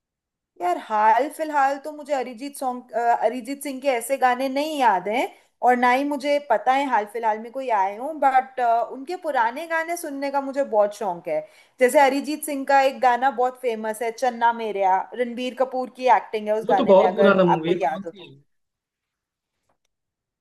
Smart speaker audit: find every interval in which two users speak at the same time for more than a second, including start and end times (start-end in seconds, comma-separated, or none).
16.7-18.3